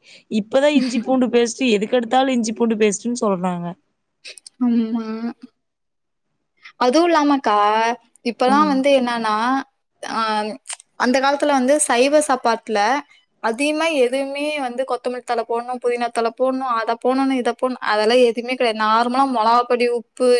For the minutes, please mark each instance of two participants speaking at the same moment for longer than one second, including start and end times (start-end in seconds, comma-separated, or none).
none